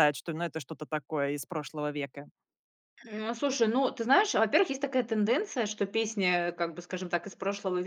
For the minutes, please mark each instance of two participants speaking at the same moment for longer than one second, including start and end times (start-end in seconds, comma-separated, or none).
none